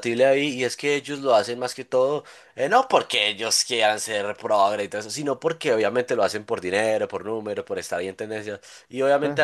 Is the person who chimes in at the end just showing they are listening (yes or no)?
yes